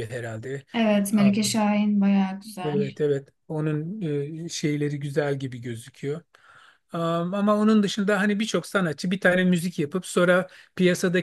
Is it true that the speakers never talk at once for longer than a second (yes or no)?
yes